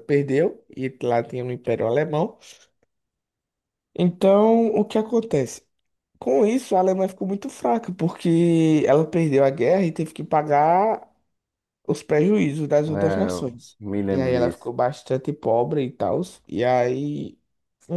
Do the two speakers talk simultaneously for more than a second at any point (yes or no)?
yes